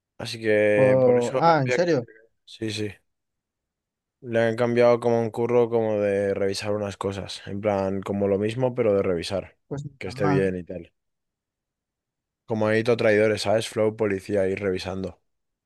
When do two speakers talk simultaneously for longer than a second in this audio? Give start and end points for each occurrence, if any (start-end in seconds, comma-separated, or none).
0.7-2.0